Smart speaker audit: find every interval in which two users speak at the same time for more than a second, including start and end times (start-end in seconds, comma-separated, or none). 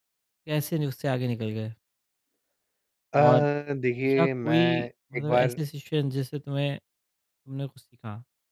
4.2-5.6